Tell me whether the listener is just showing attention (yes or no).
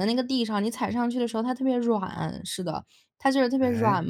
yes